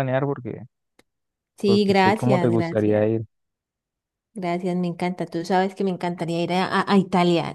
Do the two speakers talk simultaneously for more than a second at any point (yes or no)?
yes